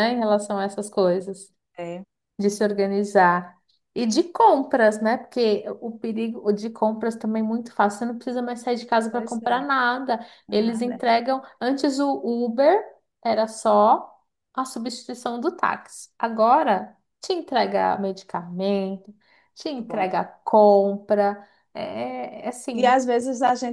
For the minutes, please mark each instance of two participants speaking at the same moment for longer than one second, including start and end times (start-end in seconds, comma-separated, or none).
none